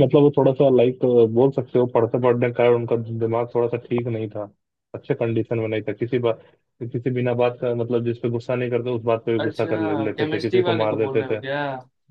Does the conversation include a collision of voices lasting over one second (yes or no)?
yes